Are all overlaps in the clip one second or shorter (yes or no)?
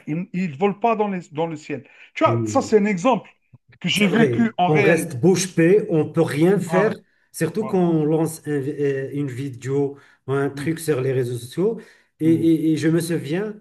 no